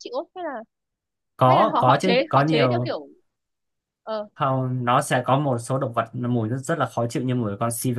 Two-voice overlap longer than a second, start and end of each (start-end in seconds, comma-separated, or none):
1.5-2.9